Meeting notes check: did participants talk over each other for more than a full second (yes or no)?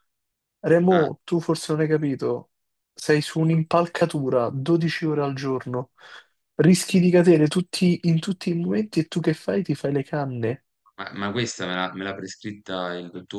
no